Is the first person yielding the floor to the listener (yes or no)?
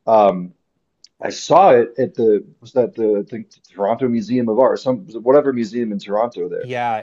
yes